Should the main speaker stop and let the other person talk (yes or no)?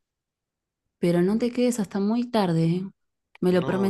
yes